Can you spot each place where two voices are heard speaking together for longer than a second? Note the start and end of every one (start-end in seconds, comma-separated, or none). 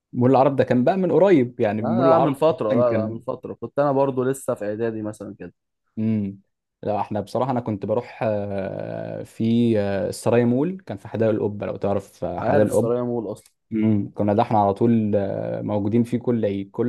1.8-3.2